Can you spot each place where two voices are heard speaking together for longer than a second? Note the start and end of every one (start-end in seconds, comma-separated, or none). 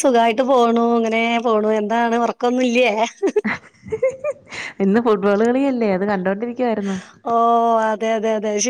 none